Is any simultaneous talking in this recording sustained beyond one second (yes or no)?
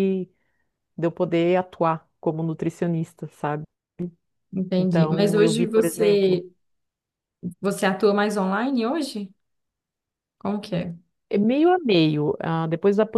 yes